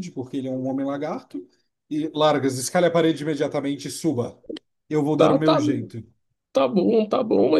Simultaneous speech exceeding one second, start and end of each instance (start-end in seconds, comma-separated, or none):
none